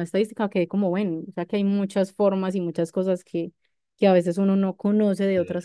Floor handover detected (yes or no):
no